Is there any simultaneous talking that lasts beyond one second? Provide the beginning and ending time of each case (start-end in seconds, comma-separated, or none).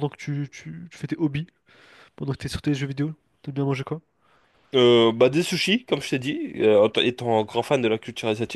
none